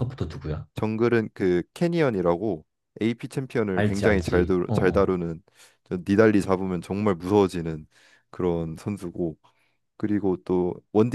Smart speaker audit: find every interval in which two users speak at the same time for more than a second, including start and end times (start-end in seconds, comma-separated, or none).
3.7-5.1